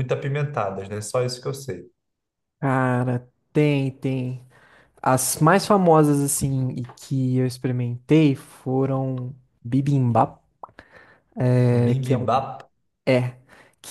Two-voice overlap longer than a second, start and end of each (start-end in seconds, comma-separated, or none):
none